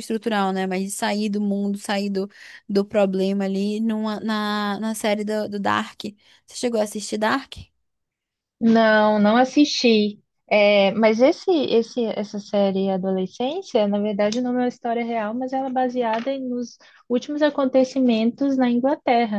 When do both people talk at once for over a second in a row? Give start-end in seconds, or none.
none